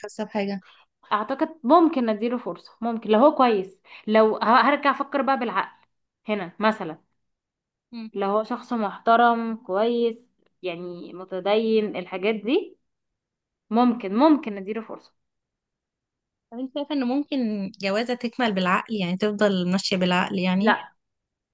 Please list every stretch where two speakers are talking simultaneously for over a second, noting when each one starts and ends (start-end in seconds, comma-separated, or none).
none